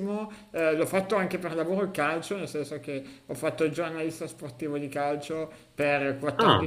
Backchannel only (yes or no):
yes